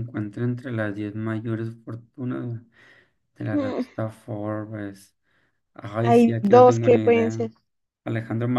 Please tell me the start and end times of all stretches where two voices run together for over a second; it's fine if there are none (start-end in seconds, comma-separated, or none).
6.0-7.5